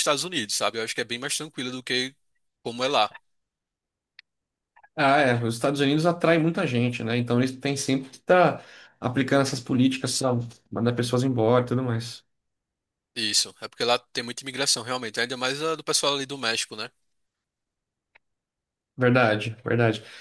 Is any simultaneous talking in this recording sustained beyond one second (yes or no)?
no